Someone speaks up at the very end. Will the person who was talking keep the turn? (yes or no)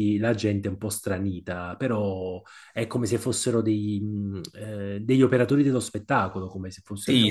no